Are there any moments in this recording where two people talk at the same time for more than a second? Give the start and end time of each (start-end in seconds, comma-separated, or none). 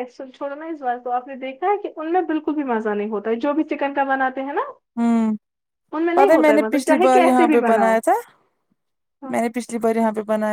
6.1-8.0